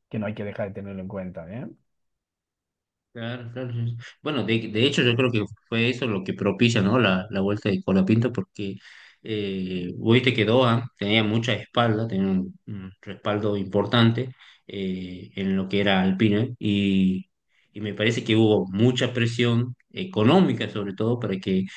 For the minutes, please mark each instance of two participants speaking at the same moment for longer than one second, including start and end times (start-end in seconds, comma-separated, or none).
none